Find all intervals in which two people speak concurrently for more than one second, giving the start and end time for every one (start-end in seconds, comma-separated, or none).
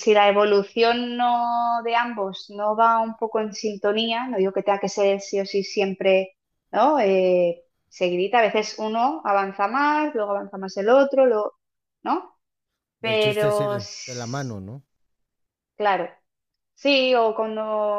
13.0-14.5